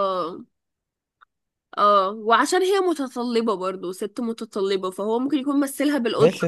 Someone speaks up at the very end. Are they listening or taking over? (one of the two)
taking over